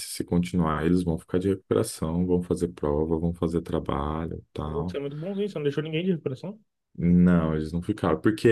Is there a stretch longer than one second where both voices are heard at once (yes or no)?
no